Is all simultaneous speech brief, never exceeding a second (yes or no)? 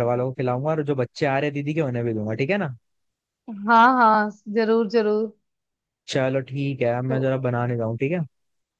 yes